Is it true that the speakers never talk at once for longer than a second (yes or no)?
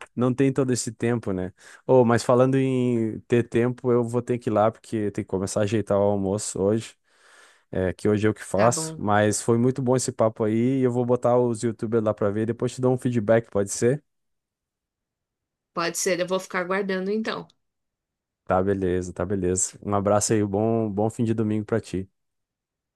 yes